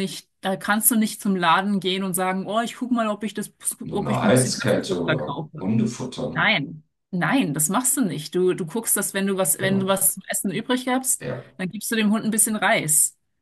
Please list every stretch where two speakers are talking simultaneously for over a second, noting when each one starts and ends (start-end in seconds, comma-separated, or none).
3.9-5.7